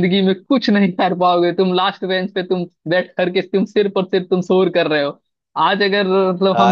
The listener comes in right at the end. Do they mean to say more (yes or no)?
no